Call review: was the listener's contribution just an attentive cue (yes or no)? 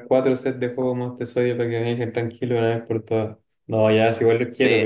yes